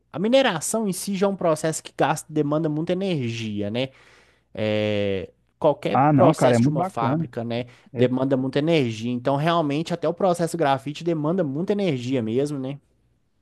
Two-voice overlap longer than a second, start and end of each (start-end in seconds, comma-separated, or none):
5.9-7.3